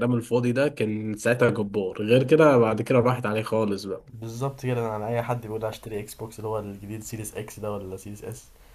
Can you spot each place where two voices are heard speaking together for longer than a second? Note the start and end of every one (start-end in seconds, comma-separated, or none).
none